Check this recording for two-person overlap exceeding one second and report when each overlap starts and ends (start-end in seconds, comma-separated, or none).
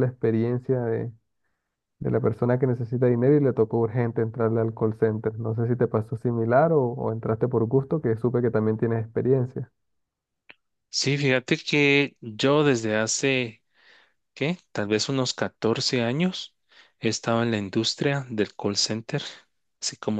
none